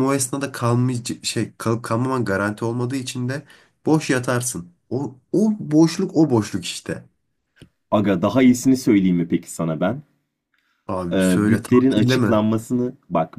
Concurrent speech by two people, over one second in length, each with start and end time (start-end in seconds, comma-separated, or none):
11.1-12.4